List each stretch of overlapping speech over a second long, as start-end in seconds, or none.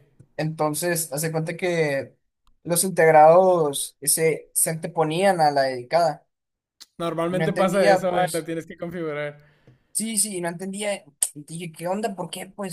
7.3-8.5